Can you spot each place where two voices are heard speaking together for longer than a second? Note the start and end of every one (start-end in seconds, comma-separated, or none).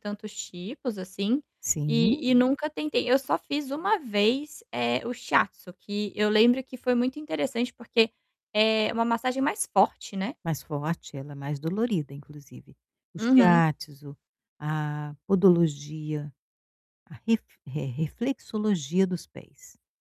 none